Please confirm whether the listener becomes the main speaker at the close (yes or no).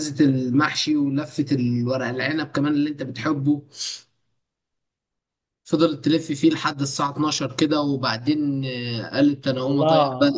yes